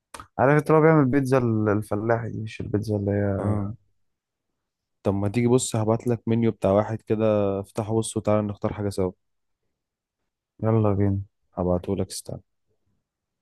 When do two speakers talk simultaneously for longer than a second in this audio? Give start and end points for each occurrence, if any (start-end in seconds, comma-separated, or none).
none